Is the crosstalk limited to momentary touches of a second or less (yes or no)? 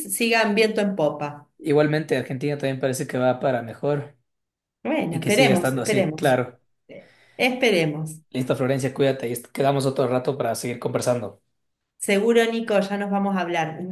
no